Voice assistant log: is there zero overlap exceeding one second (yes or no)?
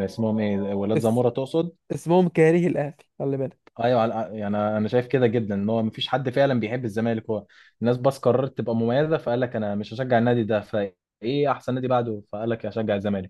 yes